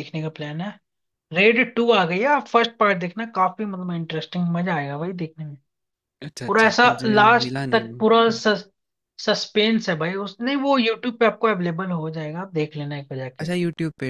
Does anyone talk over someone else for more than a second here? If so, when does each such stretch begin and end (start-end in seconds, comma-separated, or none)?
6.5-8.0